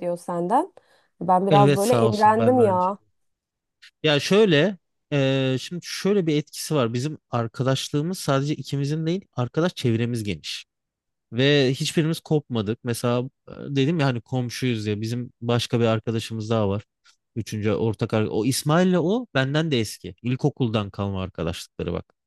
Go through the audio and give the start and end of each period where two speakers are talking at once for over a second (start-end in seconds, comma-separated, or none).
1.5-3.0